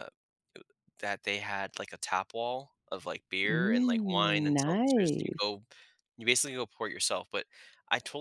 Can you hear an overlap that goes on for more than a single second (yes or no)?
yes